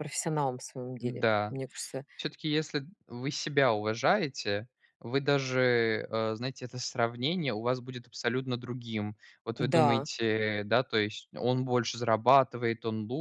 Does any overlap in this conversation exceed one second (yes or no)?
no